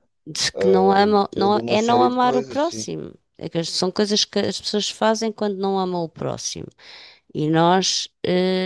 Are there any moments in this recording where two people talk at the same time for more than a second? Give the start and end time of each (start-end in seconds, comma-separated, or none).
1.3-2.9